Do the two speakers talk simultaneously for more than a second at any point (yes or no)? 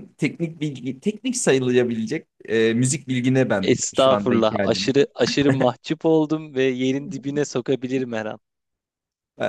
yes